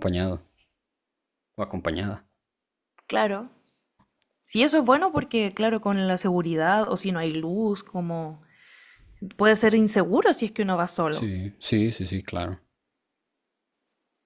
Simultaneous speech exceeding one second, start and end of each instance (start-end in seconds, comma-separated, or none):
none